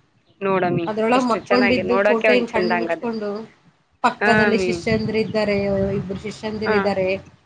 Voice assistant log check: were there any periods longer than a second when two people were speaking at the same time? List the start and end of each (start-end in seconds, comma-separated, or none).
0.9-3.1